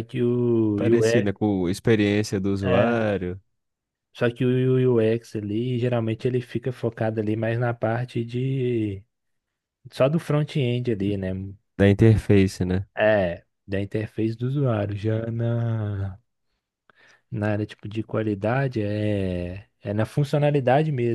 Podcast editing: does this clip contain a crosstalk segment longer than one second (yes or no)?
no